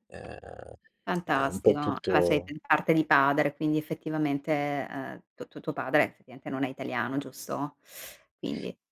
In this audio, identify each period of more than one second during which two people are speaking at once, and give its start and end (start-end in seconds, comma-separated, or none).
1.3-2.5